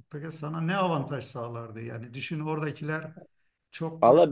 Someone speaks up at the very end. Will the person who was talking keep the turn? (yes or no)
no